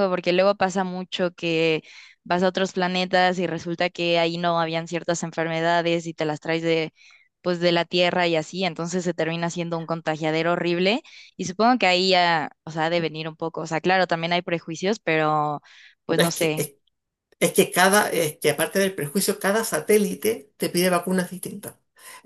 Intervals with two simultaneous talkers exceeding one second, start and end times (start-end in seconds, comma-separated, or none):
none